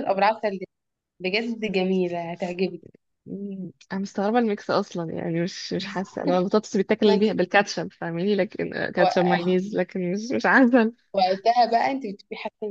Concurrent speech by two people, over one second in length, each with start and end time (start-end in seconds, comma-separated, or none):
none